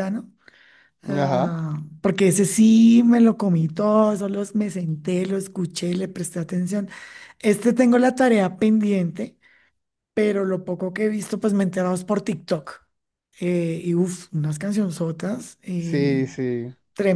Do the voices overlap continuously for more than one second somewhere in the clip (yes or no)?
no